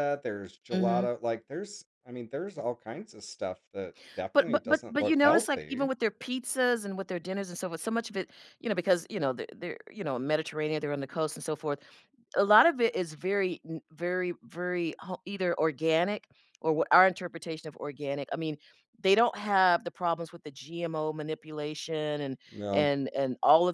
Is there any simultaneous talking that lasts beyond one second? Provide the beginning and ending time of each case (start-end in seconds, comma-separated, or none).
4.3-5.9